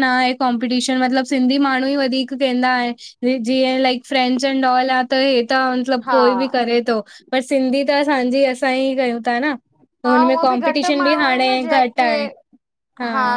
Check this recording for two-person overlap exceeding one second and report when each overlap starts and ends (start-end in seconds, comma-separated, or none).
10.1-12.1